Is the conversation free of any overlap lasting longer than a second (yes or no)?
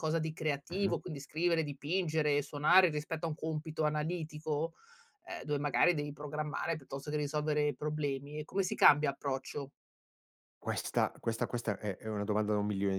yes